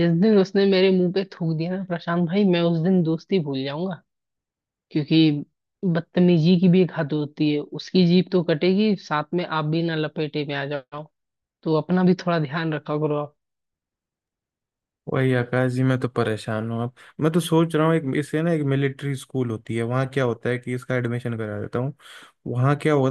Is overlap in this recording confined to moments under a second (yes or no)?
yes